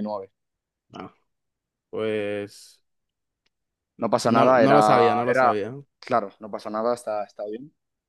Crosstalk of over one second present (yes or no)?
yes